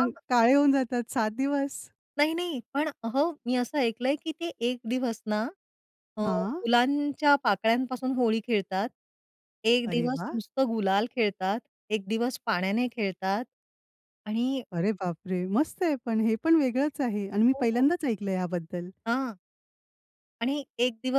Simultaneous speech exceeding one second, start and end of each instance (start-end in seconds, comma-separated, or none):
none